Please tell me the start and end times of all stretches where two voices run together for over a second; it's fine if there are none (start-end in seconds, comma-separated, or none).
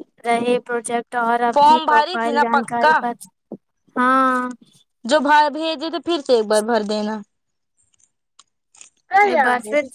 1.5-3.0